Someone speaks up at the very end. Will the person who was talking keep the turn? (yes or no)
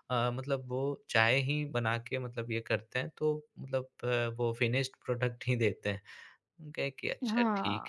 no